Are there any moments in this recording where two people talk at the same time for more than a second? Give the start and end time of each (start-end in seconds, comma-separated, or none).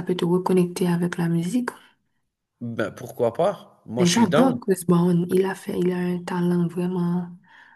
none